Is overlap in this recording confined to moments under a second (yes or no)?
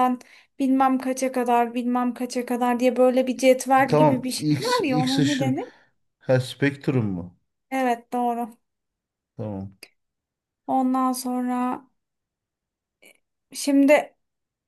no